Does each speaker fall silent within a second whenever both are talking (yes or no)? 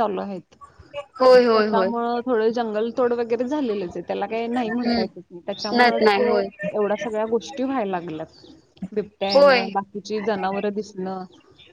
yes